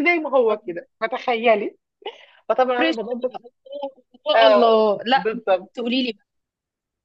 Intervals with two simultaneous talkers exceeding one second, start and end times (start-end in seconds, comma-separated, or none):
none